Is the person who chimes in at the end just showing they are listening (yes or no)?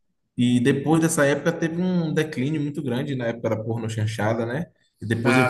yes